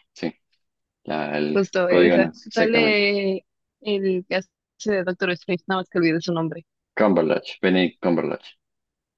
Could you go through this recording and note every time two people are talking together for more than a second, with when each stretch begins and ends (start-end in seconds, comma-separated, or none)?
1.5-3.0